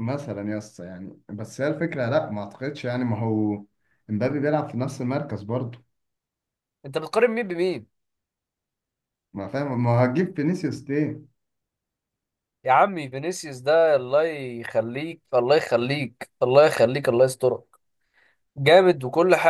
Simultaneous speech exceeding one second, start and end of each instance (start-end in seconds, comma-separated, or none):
none